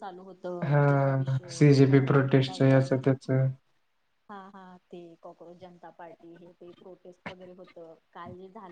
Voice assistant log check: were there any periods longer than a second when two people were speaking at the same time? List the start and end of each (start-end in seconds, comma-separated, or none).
0.9-3.0